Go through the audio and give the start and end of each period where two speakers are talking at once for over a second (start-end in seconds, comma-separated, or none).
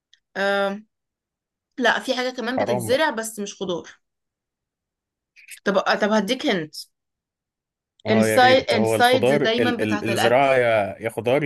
8.1-10.5